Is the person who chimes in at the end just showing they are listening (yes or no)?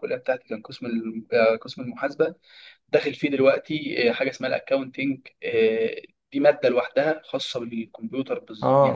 no